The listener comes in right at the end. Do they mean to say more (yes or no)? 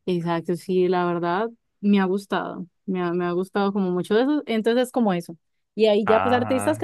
no